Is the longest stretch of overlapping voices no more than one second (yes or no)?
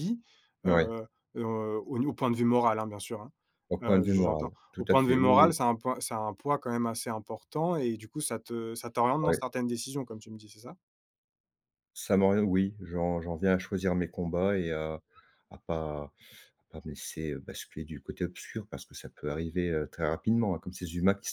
no